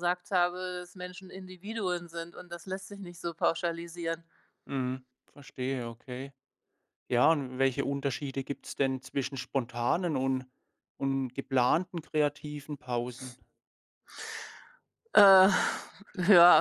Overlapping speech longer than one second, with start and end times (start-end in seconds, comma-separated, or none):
none